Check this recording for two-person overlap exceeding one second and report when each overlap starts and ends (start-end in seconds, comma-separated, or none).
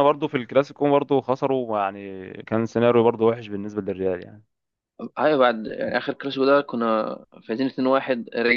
none